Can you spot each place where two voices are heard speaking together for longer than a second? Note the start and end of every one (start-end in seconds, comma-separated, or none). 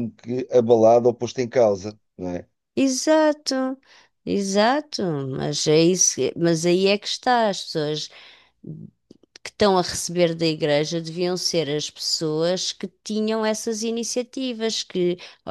none